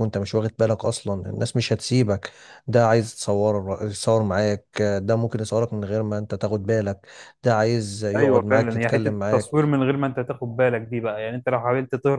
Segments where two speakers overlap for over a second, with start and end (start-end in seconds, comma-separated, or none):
8.2-9.8